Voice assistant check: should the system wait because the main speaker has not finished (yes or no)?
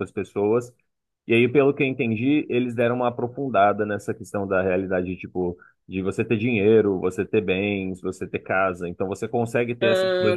yes